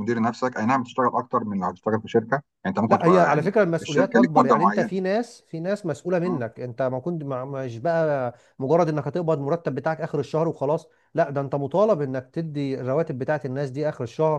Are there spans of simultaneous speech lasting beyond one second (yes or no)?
yes